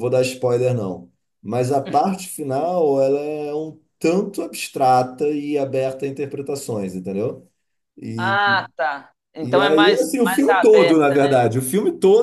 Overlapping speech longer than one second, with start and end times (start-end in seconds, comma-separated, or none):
9.4-11.4